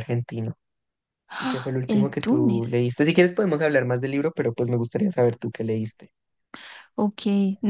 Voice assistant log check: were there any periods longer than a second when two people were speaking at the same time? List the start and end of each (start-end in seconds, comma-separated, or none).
1.4-2.7